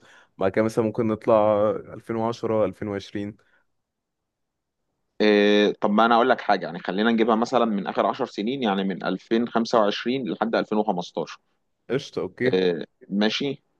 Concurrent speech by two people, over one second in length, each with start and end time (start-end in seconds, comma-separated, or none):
none